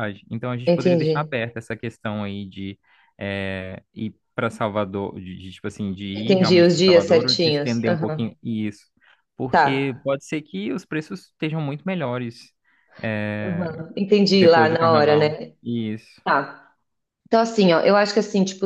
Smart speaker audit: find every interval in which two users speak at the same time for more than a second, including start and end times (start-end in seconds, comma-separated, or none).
6.1-8.3, 14.3-15.5